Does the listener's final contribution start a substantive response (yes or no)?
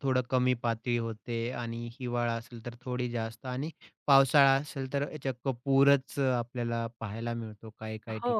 yes